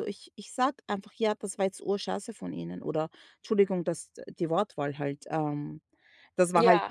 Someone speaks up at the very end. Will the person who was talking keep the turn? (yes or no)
yes